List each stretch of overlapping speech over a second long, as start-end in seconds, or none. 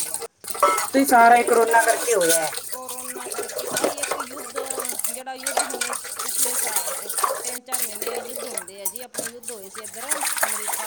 none